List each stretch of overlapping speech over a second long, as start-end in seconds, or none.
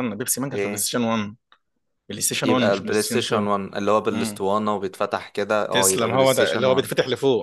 2.4-4.4, 5.7-6.9